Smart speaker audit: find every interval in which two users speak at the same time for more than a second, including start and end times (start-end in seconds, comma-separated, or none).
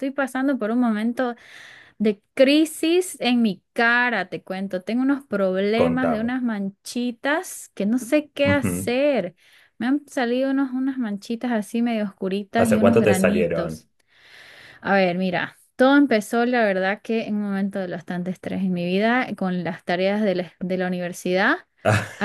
12.6-13.8